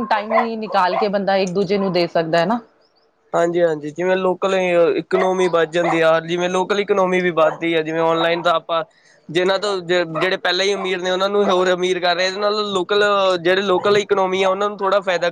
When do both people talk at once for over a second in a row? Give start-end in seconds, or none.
none